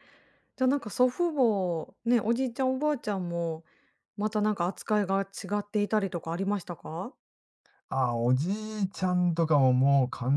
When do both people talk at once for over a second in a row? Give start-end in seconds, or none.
none